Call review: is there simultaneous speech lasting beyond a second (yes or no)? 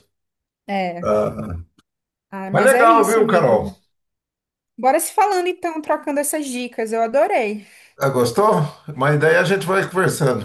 yes